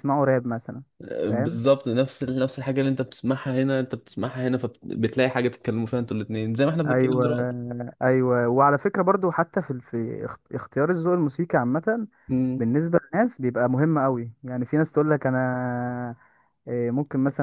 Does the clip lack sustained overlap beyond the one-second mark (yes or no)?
yes